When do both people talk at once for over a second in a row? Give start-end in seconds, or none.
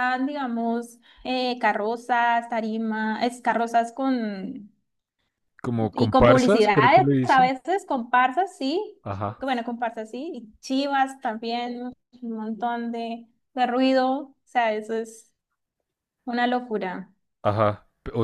5.8-7.5